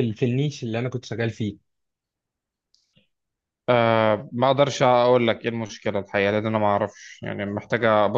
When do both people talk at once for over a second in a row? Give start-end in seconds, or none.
none